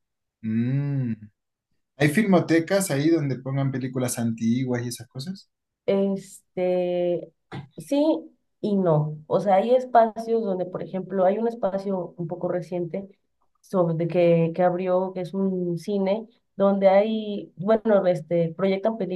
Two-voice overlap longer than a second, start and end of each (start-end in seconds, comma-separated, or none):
none